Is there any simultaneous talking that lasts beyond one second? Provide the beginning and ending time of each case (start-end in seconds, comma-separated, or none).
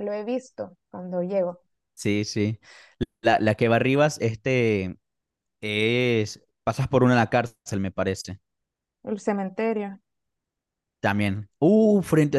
none